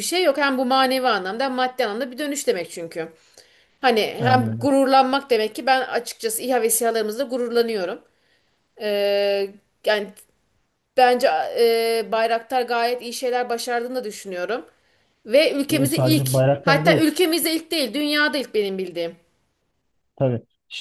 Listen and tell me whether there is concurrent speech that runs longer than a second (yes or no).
yes